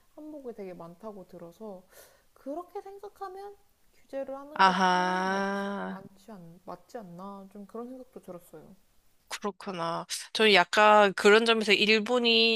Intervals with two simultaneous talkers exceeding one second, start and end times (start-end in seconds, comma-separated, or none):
4.5-6.0